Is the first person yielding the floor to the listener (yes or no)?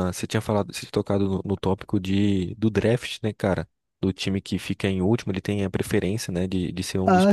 no